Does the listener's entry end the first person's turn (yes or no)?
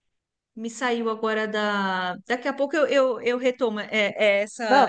no